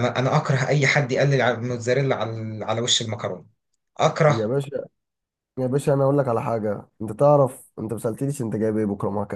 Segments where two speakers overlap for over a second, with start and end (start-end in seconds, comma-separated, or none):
none